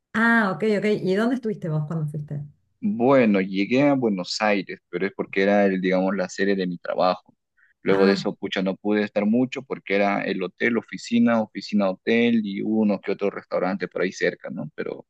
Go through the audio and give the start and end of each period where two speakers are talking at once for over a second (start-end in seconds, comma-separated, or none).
none